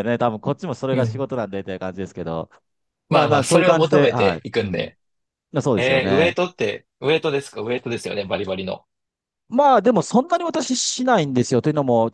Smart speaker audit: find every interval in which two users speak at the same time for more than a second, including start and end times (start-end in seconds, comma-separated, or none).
3.1-5.0